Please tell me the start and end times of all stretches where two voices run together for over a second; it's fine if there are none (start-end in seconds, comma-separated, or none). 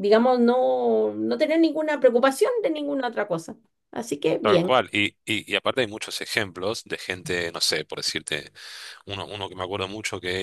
none